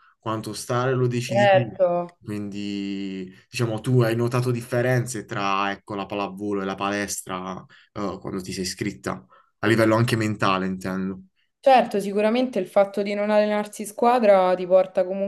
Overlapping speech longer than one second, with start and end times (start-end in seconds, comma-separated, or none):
none